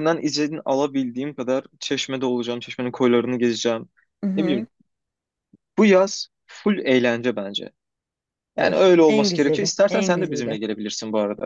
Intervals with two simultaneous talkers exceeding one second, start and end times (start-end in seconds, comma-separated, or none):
8.6-10.6